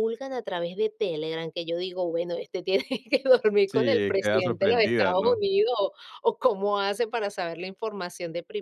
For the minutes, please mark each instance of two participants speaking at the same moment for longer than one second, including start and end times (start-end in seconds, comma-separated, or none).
3.7-5.4